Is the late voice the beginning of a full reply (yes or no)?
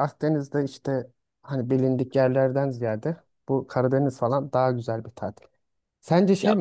no